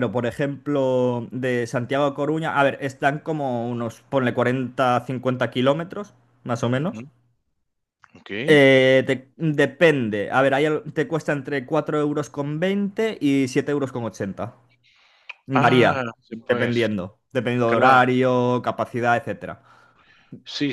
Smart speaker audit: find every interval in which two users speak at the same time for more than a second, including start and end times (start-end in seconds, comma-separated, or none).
15.5-16.9